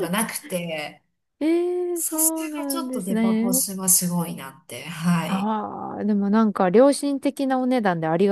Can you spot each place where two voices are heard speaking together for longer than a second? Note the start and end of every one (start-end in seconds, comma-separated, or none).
1.9-3.6